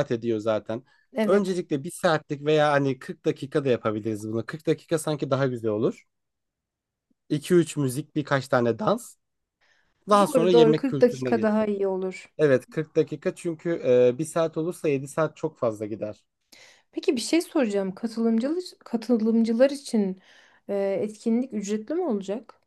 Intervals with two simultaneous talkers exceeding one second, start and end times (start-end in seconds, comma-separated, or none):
10.2-11.7